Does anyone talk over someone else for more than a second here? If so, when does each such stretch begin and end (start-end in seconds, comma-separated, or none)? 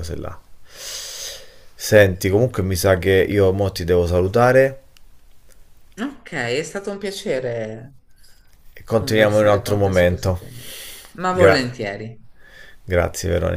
8.9-10.4